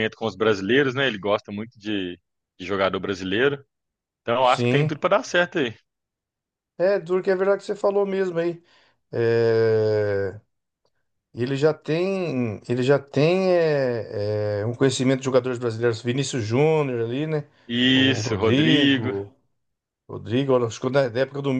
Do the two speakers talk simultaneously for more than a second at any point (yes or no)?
yes